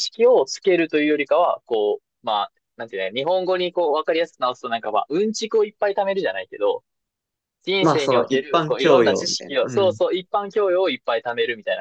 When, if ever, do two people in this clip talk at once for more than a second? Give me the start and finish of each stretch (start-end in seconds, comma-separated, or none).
7.8-10.0